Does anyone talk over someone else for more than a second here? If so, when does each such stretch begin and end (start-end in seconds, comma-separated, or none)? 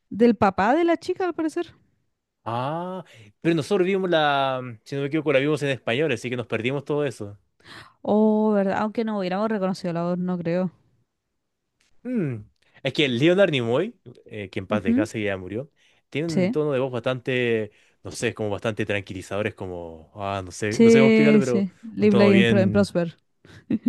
20.7-22.9